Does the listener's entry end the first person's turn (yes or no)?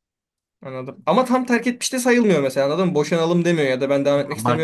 yes